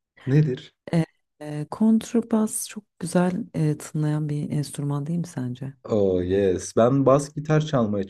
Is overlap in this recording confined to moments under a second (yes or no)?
yes